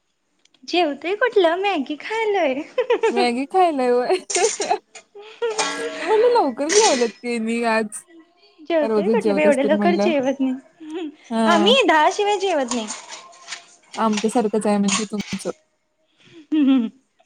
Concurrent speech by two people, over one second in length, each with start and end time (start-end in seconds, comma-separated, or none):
8.9-10.1